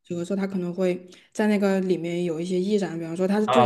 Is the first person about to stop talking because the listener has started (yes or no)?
yes